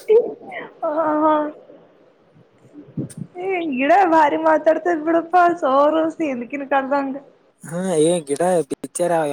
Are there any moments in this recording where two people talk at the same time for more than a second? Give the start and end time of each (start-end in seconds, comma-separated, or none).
none